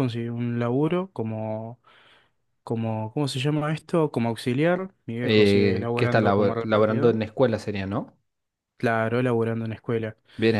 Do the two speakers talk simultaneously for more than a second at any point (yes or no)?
yes